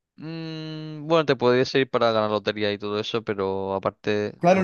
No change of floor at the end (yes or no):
no